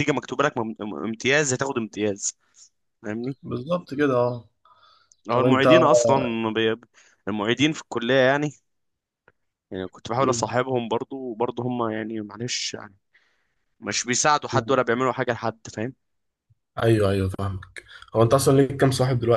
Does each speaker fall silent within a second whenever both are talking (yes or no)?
yes